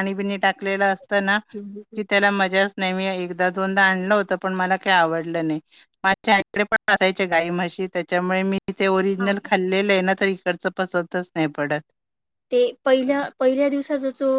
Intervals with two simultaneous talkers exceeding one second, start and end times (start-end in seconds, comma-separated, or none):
none